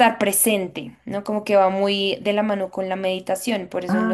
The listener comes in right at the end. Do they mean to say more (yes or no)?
yes